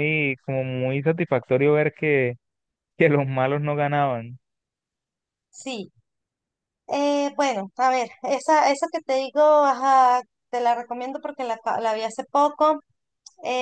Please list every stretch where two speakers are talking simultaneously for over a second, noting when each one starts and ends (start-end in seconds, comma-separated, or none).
none